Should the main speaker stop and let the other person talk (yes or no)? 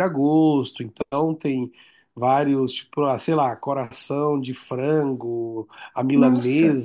no